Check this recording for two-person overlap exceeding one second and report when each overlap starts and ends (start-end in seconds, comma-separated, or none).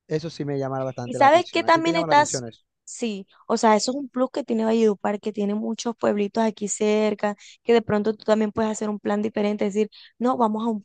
1.0-2.5